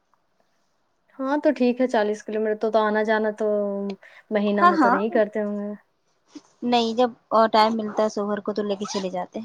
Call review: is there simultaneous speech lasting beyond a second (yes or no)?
no